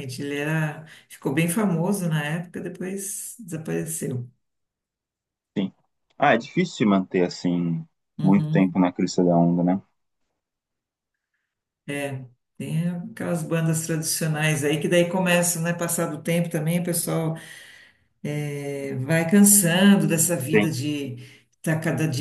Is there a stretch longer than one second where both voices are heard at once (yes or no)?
no